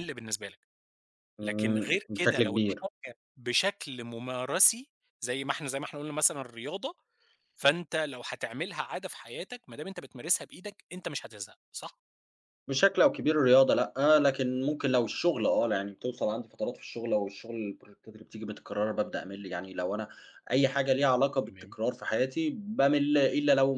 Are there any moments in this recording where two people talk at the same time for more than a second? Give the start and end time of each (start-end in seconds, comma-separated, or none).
1.4-2.8